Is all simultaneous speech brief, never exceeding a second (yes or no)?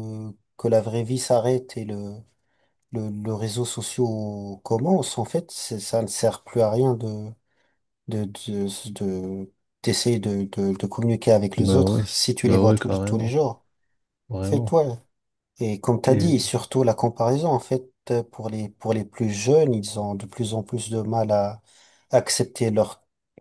no